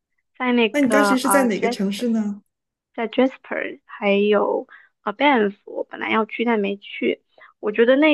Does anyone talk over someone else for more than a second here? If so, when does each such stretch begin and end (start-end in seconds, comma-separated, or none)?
0.7-2.1